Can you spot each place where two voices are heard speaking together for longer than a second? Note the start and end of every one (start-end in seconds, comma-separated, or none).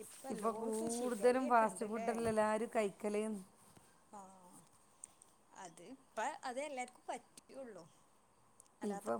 none